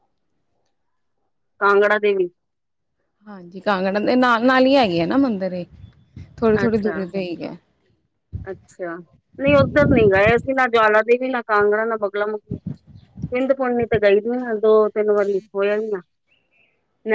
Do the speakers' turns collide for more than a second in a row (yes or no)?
no